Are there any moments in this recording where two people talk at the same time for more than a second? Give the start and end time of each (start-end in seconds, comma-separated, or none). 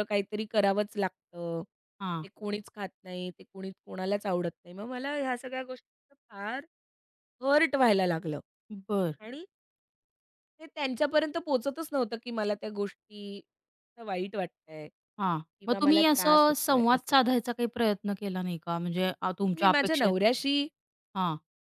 15.2-17.1